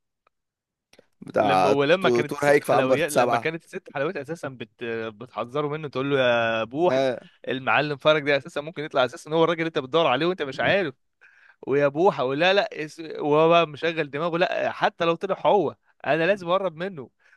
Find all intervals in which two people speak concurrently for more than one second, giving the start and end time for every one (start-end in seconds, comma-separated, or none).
1.4-3.5